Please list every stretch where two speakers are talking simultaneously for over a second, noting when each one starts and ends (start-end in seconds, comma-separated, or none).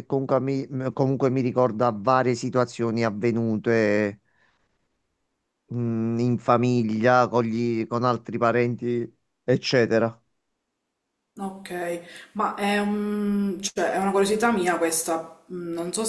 none